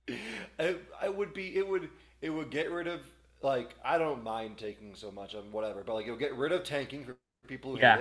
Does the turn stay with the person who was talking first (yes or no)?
yes